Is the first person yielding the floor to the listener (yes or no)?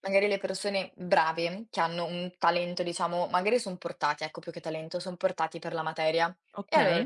no